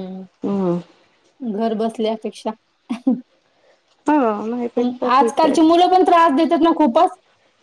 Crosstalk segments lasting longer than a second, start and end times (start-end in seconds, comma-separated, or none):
none